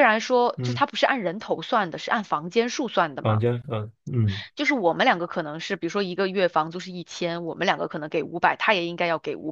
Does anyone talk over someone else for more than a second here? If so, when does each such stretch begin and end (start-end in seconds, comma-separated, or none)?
none